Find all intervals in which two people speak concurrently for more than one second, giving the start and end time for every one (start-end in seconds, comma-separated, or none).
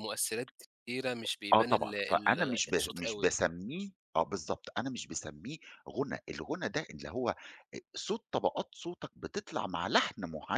1.5-3.3